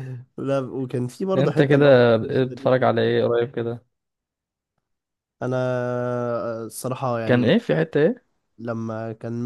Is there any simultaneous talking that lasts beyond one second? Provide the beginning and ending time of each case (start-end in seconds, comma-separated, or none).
1.4-3.1